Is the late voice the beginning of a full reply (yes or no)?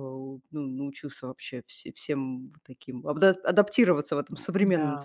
no